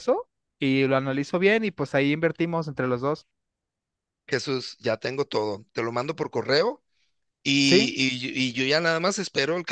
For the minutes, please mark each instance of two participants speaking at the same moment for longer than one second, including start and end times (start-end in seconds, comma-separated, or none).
none